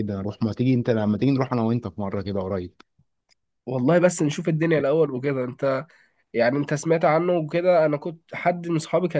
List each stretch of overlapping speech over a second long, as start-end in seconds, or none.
none